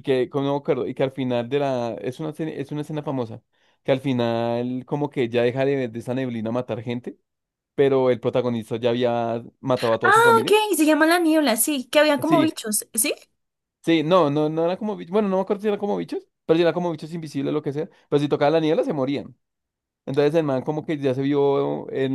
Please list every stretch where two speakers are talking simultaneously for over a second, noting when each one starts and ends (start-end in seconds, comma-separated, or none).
none